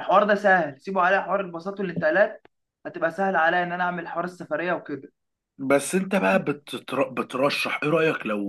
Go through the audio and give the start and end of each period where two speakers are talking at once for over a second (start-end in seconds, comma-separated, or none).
none